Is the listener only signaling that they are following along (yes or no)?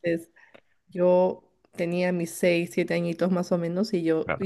yes